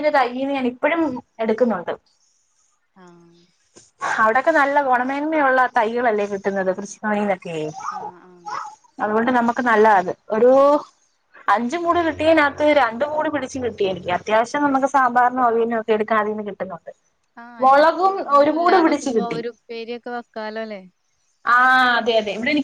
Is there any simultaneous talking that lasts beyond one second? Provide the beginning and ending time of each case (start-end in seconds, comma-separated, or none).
17.6-19.4